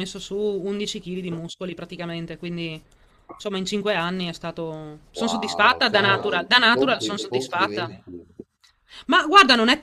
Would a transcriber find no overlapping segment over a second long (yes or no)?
no